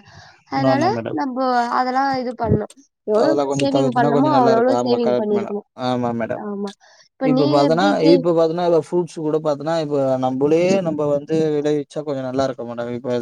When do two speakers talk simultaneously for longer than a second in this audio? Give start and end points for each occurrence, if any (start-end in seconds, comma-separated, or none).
3.2-5.6